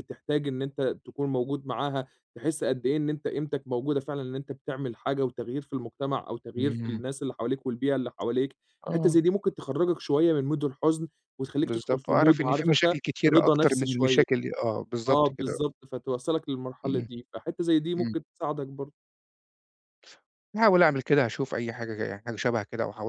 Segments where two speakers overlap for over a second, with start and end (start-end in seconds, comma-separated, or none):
11.6-14.2